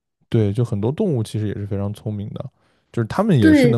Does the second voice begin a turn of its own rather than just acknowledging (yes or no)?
no